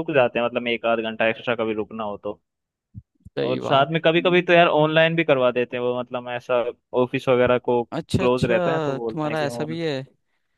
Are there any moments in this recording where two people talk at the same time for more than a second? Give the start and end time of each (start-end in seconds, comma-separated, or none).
8.2-9.8